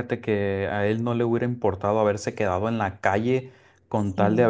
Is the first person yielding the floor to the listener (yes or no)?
no